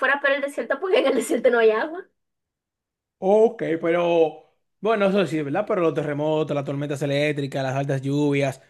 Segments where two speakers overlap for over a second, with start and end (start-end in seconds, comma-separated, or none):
none